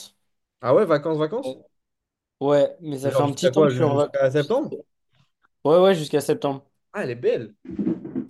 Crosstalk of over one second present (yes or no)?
yes